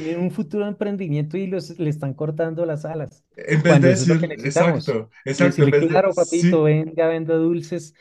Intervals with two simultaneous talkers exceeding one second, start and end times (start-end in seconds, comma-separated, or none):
3.6-6.7